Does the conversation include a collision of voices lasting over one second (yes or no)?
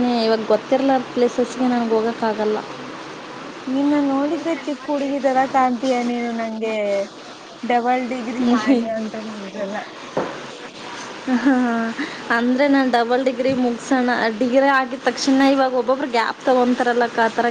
no